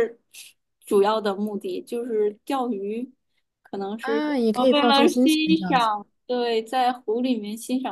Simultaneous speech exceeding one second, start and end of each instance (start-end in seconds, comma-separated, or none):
4.0-5.9